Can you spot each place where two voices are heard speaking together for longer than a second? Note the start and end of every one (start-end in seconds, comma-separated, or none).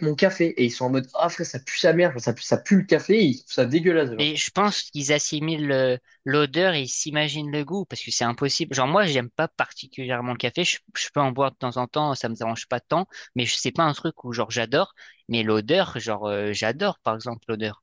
none